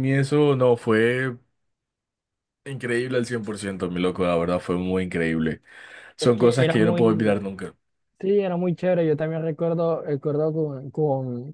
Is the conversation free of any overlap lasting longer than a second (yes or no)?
no